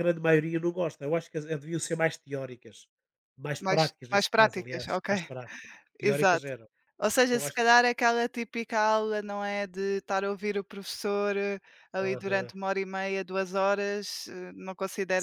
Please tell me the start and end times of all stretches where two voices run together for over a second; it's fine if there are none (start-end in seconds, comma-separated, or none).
3.6-5.1